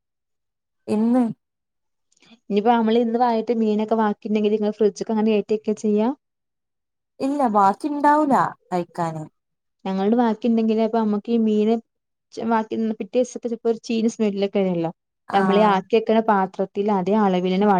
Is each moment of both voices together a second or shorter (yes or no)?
yes